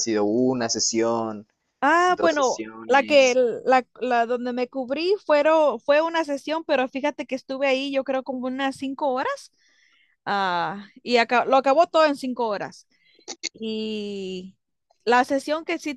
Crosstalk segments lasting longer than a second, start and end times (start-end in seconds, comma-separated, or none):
2.1-3.4